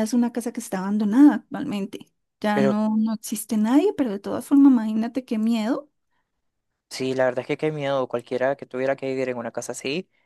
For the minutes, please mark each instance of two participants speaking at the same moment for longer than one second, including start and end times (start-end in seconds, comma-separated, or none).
none